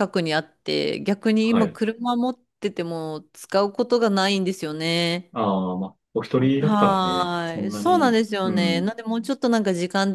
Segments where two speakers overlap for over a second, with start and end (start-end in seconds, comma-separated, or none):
6.6-8.9